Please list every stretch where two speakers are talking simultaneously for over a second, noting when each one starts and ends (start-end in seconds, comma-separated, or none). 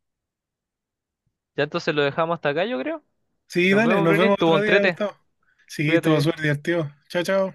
3.7-5.0